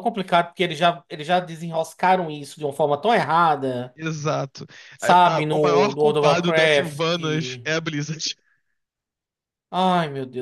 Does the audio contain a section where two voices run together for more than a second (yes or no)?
yes